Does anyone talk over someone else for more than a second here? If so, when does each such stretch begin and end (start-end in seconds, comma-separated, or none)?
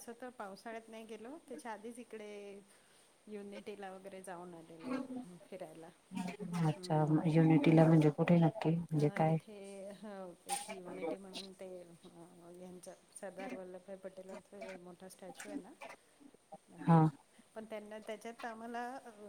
none